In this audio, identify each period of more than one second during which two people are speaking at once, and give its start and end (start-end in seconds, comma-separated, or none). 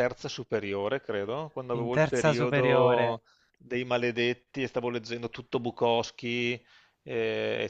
1.7-3.2